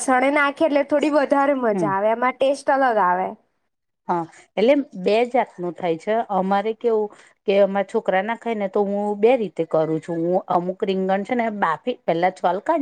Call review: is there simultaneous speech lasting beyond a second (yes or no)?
no